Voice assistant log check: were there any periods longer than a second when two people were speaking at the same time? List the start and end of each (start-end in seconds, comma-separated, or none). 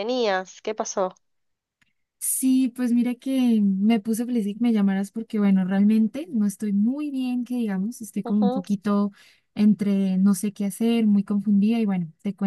none